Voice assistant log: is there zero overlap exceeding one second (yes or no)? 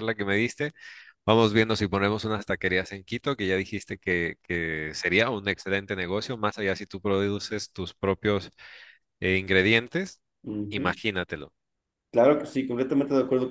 yes